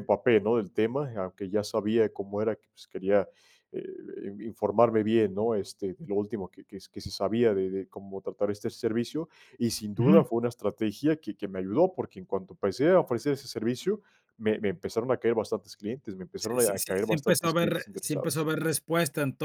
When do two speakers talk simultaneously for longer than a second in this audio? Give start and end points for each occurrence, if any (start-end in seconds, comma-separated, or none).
16.4-18.4